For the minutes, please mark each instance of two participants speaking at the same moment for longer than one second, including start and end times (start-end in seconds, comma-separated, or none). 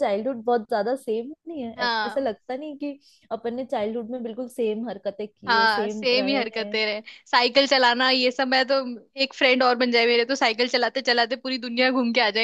5.5-6.8